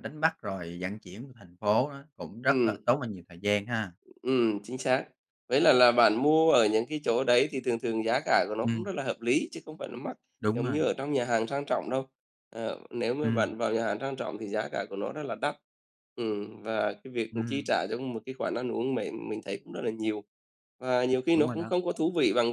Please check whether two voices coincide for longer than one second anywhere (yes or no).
no